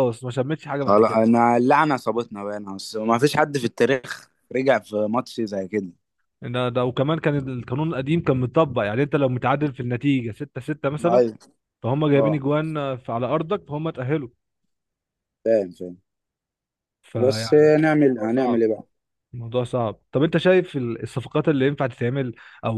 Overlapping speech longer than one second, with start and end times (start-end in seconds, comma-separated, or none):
17.2-18.6